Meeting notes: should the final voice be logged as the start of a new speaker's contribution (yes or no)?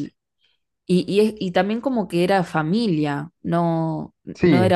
no